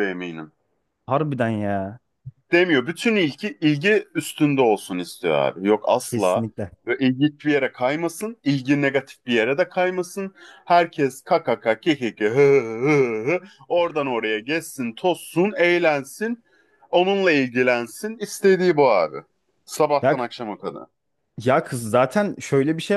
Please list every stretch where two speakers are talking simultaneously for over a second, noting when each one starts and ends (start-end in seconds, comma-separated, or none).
none